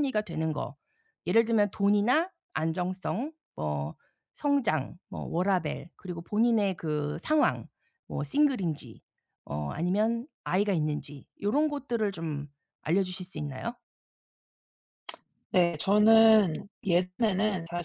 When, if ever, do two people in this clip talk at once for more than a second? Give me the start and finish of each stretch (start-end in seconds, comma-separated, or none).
none